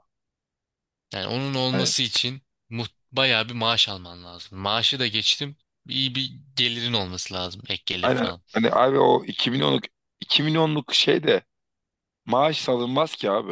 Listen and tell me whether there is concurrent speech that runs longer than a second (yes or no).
no